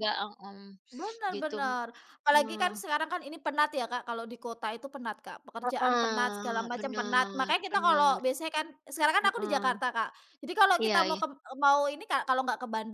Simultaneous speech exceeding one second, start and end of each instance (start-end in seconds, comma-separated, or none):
5.6-8.2